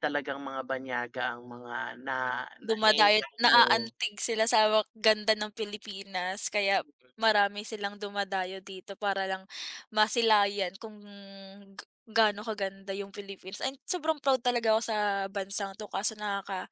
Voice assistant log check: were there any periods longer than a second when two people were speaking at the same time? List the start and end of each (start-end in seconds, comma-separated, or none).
2.6-3.9